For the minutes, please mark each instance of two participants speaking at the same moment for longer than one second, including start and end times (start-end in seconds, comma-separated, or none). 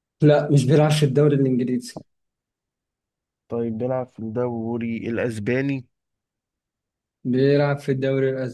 none